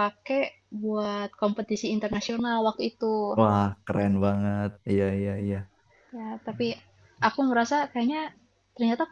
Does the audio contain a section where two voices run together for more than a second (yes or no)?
no